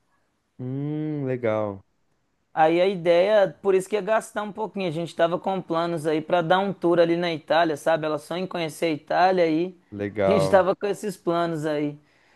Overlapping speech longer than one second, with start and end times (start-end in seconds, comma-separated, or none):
none